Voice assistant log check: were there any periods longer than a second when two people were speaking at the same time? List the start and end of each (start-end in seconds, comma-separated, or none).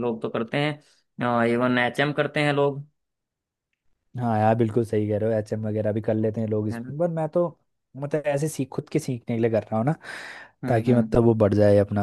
none